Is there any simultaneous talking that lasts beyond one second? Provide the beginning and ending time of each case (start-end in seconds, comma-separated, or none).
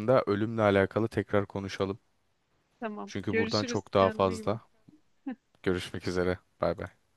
3.0-4.6